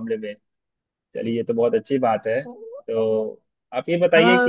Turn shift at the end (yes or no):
yes